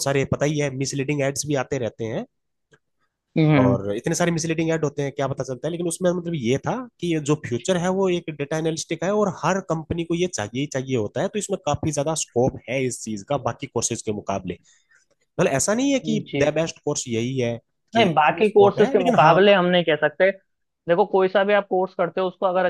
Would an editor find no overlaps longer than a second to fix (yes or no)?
no